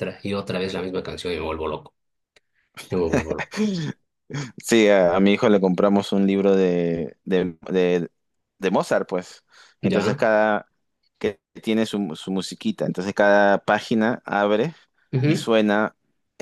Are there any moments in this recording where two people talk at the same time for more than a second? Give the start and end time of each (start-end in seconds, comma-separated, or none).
none